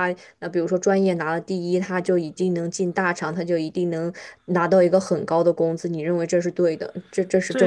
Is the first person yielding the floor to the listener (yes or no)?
yes